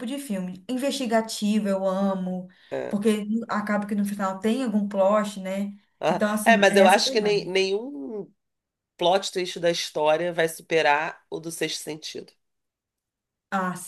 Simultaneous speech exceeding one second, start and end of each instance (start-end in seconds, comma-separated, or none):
6.0-7.5